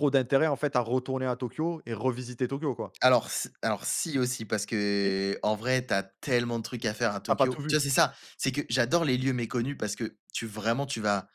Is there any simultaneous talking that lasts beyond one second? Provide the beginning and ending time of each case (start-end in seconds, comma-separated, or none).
none